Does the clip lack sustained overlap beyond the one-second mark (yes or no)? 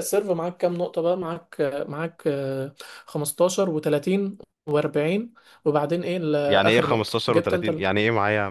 no